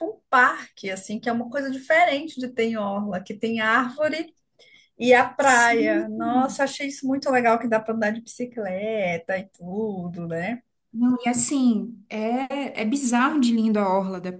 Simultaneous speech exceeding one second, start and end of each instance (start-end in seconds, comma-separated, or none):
5.4-6.6